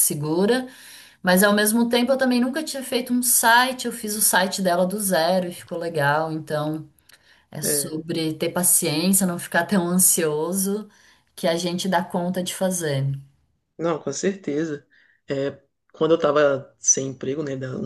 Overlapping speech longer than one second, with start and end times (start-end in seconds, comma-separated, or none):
none